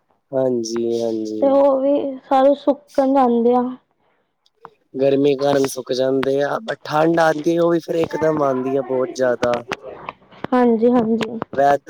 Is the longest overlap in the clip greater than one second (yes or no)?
no